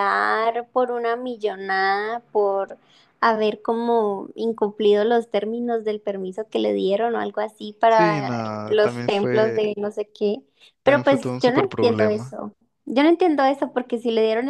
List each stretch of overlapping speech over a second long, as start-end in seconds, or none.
7.9-9.6, 10.8-12.3